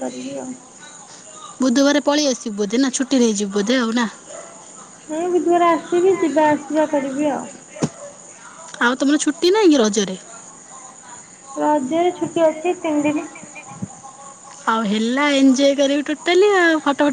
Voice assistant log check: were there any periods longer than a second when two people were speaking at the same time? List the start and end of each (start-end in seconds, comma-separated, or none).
none